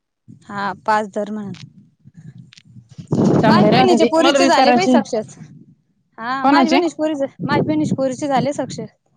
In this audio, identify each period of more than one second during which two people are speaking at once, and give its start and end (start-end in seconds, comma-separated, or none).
3.5-5.0